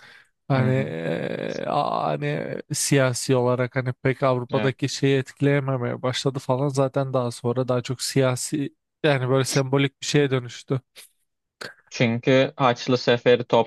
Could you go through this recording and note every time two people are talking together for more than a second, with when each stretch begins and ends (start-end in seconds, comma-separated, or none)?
none